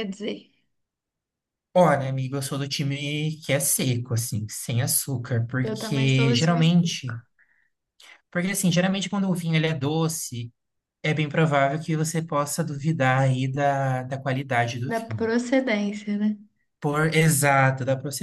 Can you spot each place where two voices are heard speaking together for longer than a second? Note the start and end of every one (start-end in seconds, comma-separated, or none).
5.6-7.0